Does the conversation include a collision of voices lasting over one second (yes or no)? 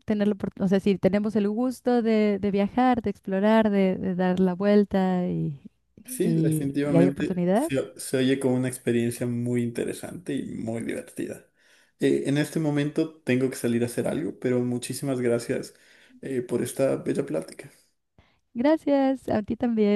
yes